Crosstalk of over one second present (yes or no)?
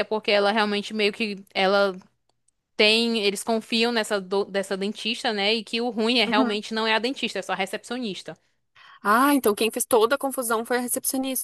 no